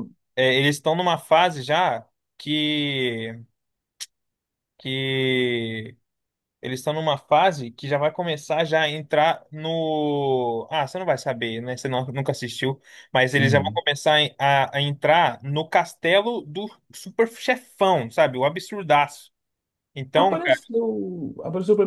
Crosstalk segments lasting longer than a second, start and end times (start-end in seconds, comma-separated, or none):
none